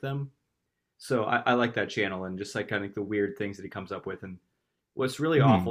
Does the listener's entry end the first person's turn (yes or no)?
no